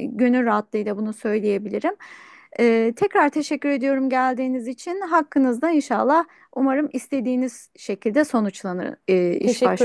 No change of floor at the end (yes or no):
no